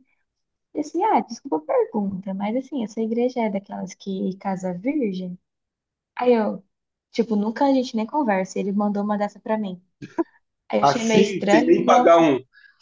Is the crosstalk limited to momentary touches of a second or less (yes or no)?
no